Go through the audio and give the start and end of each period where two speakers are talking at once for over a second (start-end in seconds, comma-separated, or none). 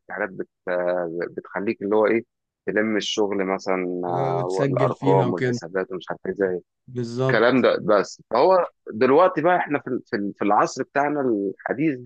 4.1-5.6